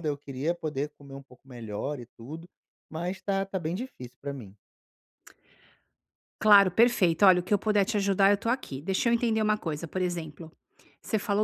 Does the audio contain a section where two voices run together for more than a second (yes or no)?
no